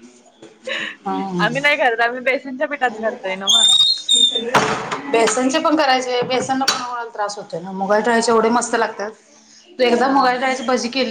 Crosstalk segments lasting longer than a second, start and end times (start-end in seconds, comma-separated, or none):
none